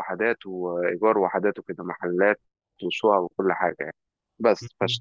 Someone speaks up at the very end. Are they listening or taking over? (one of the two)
listening